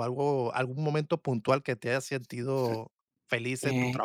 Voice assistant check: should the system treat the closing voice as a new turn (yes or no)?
yes